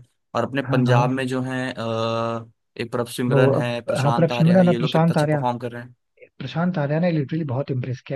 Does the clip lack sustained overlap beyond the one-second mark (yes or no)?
no